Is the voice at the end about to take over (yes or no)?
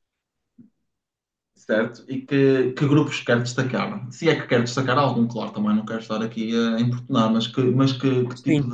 no